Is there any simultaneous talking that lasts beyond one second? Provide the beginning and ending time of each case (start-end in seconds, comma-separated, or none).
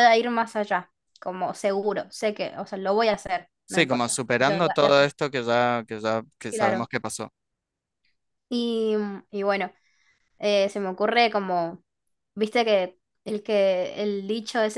3.7-5.0